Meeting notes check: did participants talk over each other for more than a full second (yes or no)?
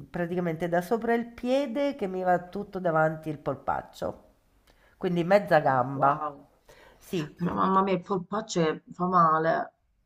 no